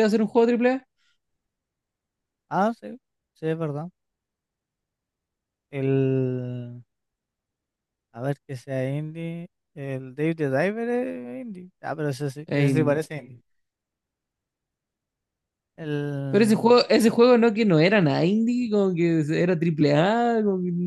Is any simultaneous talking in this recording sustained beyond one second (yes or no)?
no